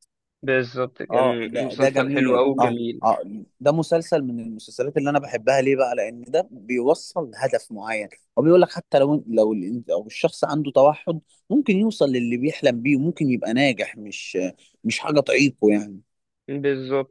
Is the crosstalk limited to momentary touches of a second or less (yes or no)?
no